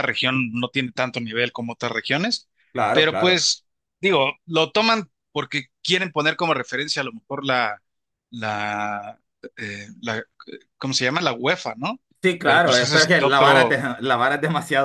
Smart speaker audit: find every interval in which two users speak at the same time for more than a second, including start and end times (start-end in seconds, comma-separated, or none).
12.4-13.8